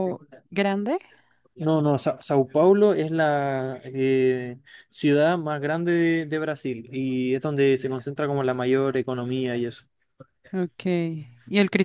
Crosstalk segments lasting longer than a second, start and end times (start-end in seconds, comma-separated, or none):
none